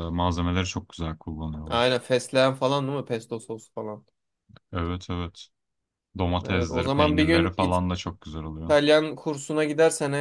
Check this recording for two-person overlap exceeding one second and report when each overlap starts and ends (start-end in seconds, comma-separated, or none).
6.5-7.8